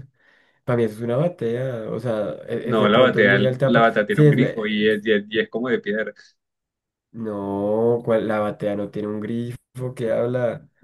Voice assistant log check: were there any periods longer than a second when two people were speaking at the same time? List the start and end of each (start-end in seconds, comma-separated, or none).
2.6-5.0